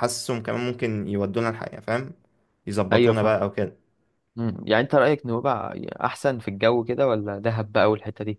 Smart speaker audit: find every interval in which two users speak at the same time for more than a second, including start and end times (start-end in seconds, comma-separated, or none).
none